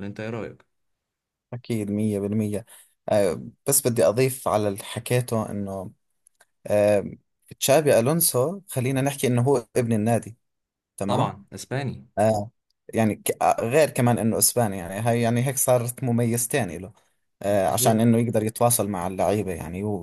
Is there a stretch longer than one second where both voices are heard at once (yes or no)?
no